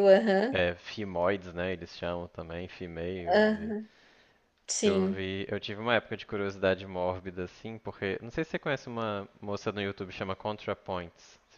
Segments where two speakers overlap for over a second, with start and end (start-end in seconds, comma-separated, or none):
none